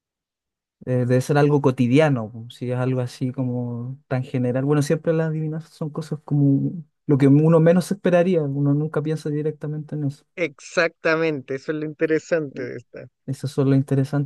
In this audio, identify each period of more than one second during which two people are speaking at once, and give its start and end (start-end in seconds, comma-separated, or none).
none